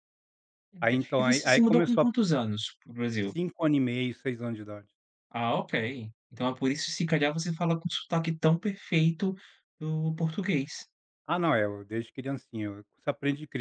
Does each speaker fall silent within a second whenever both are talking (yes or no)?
no